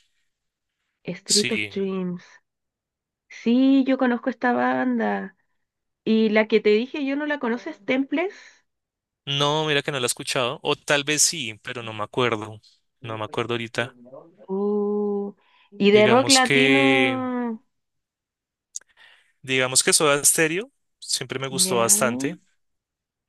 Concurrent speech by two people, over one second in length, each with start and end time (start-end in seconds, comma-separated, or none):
15.9-17.2